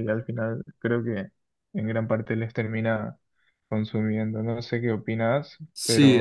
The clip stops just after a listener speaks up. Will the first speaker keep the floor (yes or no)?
no